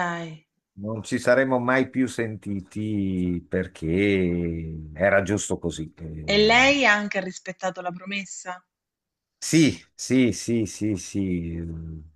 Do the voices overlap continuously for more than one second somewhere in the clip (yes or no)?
no